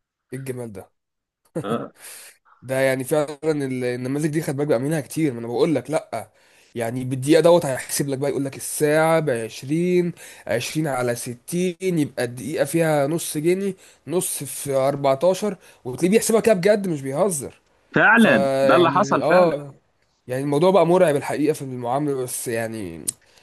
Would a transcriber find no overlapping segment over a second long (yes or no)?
no